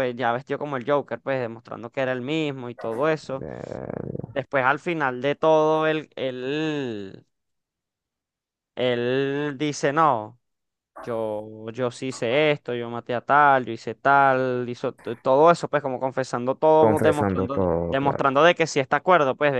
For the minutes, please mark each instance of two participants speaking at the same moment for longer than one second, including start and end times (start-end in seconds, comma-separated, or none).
16.8-18.3